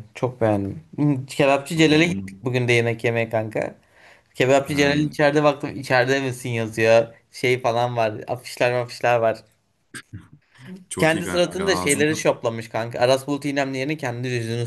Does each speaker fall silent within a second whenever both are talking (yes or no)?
no